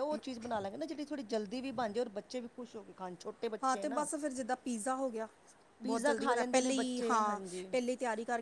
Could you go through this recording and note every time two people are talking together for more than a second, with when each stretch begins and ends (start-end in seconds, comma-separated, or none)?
5.8-7.7